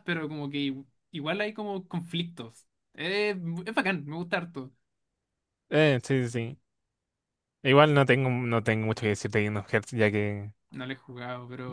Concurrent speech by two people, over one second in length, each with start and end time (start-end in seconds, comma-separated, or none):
none